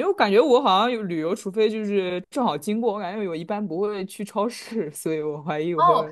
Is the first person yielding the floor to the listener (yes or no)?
yes